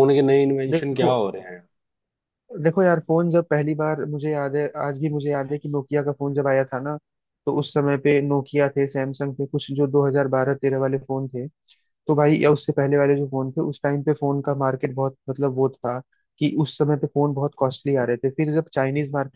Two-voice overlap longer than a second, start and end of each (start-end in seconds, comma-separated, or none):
none